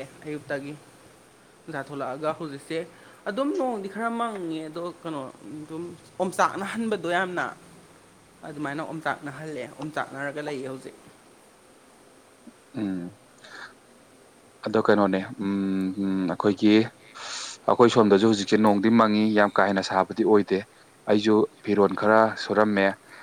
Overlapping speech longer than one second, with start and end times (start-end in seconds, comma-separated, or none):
none